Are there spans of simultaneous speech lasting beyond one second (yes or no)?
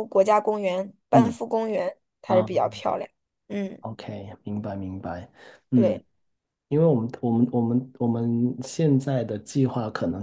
no